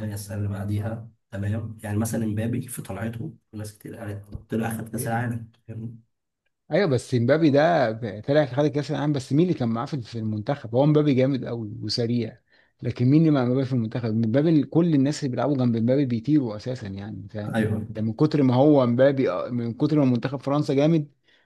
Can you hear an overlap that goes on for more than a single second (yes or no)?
no